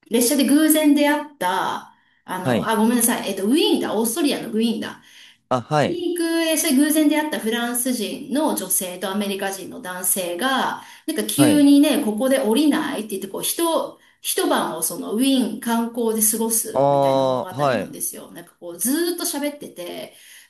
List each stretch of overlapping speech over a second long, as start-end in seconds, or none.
16.7-18.0